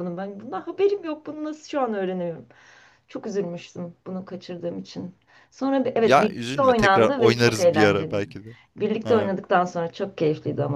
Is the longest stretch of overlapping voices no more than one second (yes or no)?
no